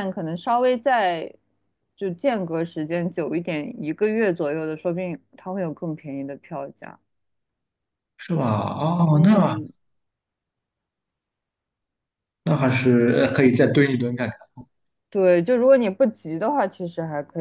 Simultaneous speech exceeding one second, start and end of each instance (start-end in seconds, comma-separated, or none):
none